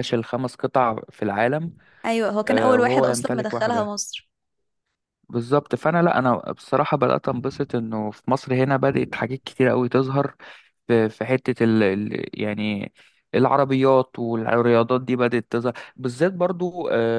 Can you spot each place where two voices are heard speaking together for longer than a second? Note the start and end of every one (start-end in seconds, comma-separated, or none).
2.5-4.0